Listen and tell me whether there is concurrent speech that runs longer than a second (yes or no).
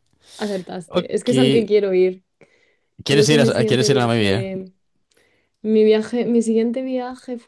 yes